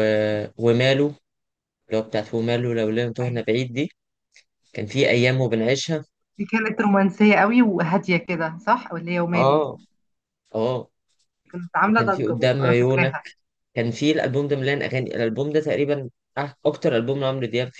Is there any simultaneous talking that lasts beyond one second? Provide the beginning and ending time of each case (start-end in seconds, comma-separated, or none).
11.8-13.1